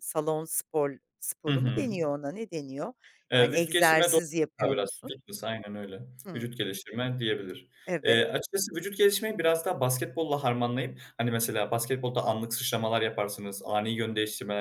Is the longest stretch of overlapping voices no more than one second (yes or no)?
no